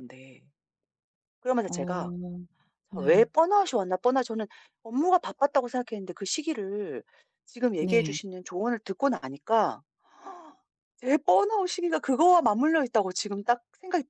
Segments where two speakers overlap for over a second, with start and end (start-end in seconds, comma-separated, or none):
none